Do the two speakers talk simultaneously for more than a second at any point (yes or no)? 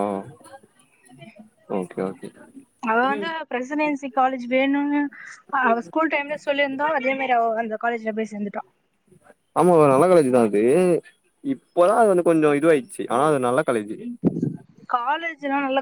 no